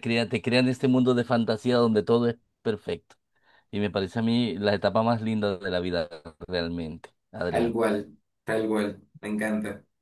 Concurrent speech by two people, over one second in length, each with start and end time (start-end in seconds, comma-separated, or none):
none